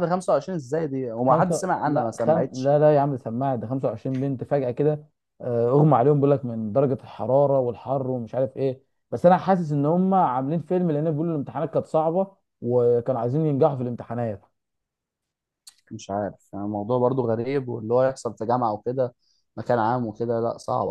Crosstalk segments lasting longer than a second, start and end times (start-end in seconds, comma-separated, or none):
1.2-2.8